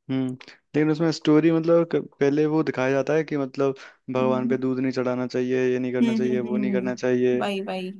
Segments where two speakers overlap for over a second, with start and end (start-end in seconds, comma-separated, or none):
5.9-7.4